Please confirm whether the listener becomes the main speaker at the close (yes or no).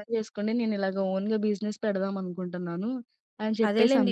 yes